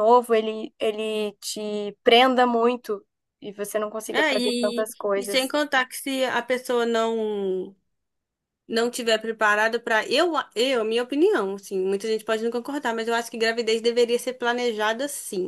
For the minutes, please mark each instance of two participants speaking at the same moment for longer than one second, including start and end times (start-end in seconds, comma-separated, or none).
4.1-5.5